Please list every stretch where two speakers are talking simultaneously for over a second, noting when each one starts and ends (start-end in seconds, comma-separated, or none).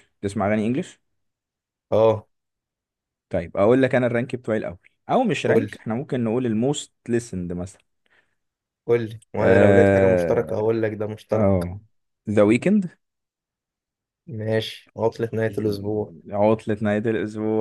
9.4-10.6